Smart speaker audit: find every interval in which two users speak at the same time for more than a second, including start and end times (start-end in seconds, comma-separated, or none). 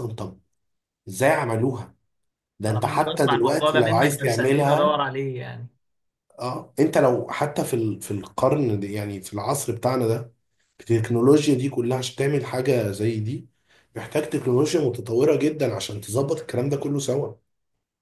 2.7-5.0